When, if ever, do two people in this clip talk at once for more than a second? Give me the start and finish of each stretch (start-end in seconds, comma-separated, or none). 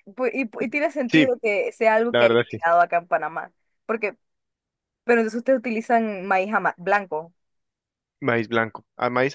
none